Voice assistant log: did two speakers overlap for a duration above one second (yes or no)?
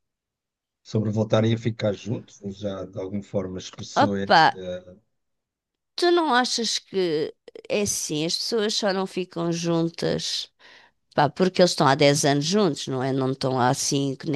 no